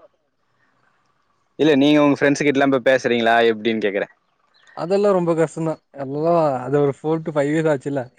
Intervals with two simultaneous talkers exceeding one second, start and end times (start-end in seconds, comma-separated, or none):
none